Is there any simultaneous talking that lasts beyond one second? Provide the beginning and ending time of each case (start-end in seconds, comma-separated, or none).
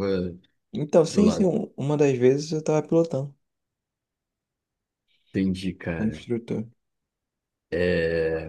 none